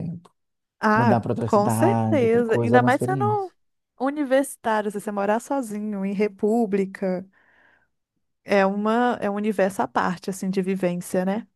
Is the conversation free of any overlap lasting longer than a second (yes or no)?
no